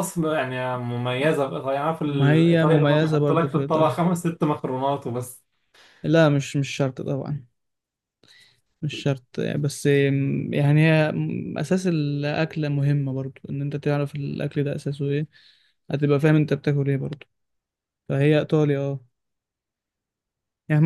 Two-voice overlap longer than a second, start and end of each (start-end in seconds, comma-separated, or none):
2.1-4.0